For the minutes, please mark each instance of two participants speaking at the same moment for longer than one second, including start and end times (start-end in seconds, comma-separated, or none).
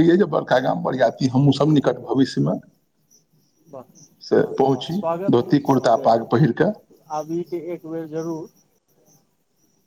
5.3-7.0